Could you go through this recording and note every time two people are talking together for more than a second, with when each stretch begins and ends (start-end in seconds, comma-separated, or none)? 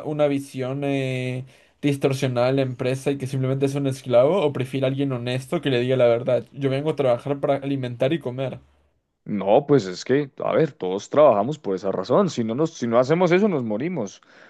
none